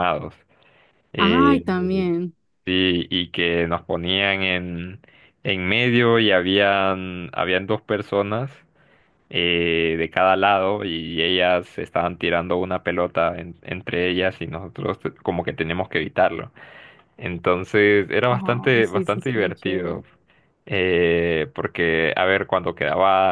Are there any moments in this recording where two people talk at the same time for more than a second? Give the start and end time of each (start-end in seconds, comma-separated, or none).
18.7-20.0